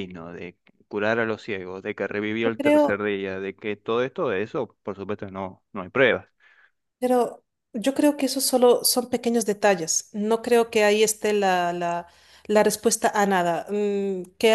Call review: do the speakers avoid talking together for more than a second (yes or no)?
yes